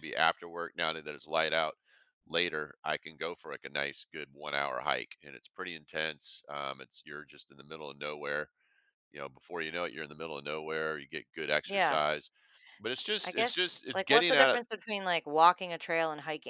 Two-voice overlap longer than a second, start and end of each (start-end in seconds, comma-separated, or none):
13.2-14.6